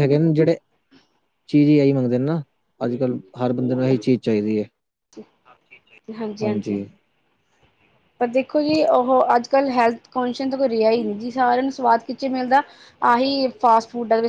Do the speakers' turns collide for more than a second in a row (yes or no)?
no